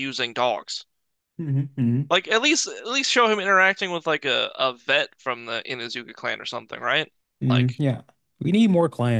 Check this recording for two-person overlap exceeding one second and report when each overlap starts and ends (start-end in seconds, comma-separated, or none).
none